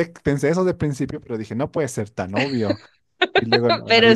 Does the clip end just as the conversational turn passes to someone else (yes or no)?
no